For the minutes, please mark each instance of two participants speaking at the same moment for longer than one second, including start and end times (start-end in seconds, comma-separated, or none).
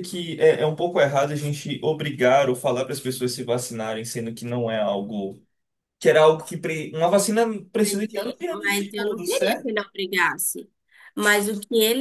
7.9-9.7